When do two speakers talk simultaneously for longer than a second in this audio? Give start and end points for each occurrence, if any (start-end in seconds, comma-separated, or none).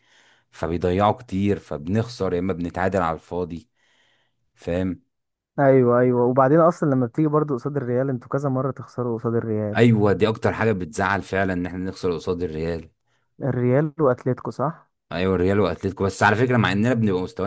none